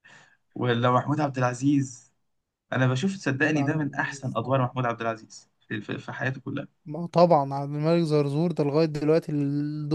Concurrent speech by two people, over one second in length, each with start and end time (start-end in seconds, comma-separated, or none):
3.4-4.7